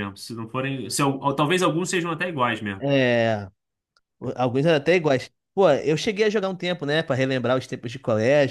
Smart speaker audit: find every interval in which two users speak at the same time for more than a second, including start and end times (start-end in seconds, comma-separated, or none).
none